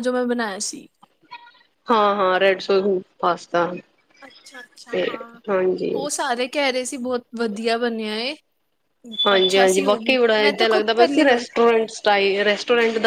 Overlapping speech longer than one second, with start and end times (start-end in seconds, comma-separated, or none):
9.3-11.4